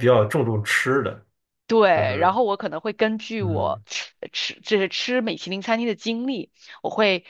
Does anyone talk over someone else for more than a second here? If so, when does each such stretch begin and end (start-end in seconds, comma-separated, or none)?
none